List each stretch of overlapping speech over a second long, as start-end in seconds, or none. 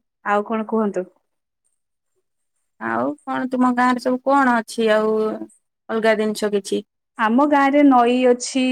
none